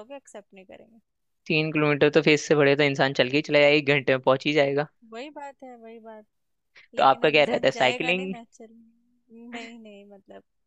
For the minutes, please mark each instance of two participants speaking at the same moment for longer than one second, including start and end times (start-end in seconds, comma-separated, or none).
7.0-8.3